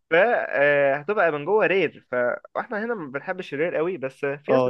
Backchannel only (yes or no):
no